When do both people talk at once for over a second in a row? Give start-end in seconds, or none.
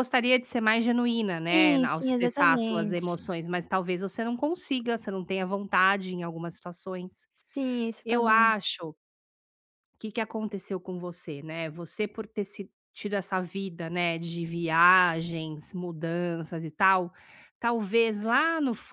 1.5-3.0